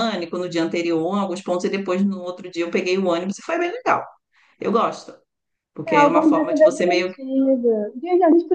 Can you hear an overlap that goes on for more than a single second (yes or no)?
yes